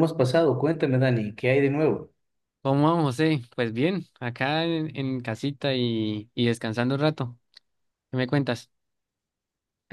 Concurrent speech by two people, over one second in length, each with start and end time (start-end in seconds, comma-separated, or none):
none